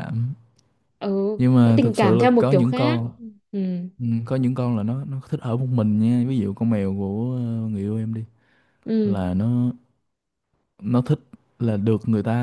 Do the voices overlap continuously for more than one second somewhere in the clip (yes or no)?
yes